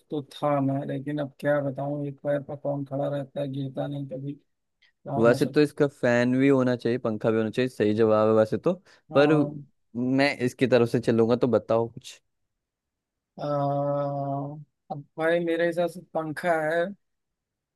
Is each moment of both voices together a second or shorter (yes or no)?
yes